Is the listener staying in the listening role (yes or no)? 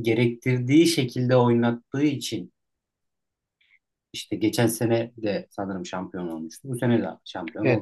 no